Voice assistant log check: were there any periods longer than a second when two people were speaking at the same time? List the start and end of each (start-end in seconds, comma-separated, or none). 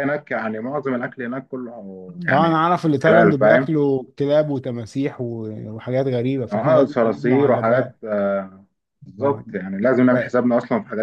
2.3-3.8, 6.5-8.0